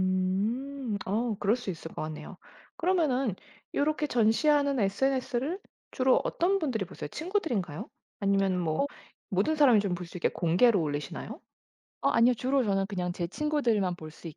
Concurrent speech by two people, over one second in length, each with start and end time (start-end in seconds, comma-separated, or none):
none